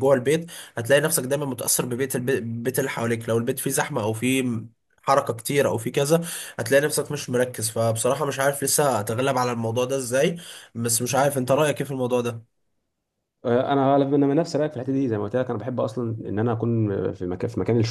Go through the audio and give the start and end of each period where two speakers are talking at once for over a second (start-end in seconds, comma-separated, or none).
none